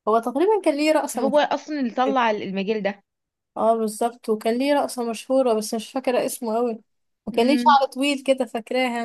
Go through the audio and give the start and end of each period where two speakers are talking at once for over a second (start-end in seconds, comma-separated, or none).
none